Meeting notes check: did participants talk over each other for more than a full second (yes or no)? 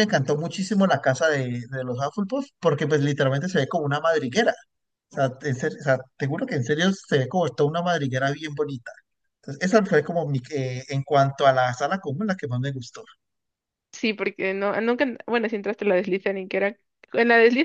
no